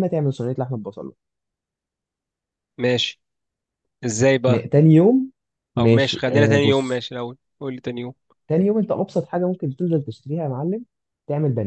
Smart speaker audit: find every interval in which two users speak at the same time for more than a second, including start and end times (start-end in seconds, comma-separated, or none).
5.8-7.0